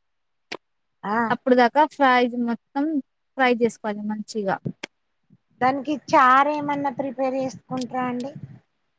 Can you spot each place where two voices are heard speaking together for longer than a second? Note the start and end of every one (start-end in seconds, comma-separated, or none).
none